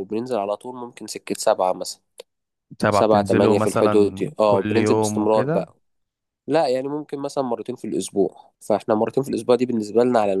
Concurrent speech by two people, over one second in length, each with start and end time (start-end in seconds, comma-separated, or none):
2.9-5.7